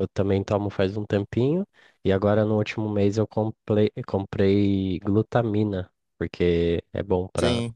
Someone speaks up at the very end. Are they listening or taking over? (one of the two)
listening